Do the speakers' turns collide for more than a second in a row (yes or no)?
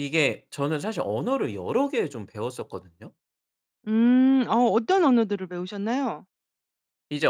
no